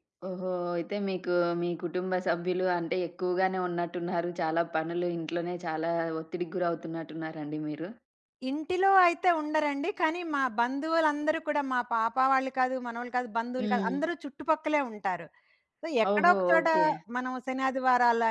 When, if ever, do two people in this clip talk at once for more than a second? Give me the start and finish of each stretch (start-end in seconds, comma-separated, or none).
none